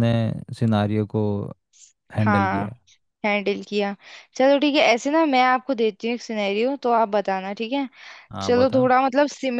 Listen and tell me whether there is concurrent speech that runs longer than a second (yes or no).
no